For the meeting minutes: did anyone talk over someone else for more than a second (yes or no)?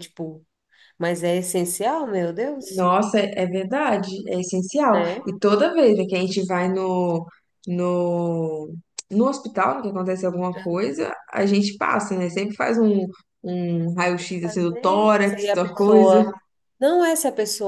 yes